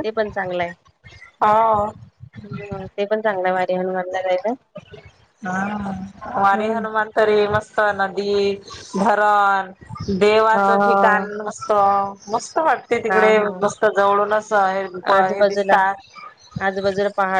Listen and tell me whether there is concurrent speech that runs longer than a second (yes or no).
no